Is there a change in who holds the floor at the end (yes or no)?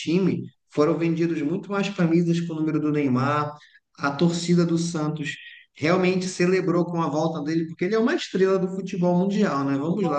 no